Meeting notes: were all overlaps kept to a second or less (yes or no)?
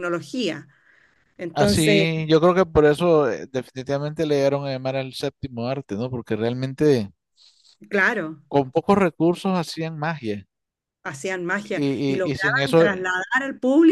no